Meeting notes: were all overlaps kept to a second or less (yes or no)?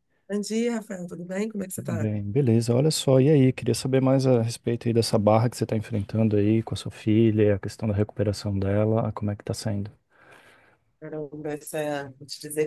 yes